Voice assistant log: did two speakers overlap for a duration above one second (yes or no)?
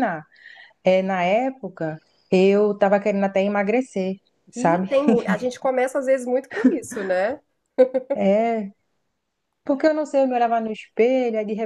no